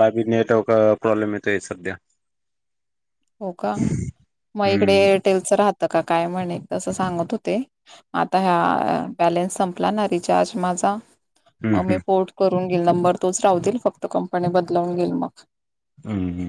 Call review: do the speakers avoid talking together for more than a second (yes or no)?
yes